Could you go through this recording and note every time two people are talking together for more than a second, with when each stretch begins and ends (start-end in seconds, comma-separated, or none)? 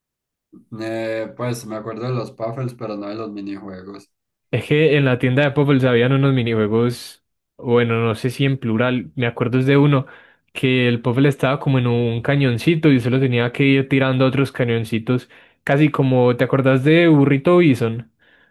none